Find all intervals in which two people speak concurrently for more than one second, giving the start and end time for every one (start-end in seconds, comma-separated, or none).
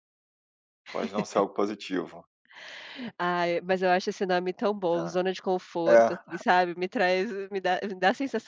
none